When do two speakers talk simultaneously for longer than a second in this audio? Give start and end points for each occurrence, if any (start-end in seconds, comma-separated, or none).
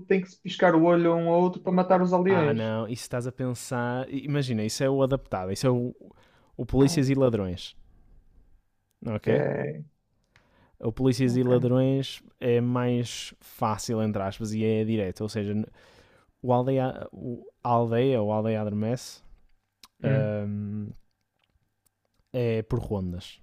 none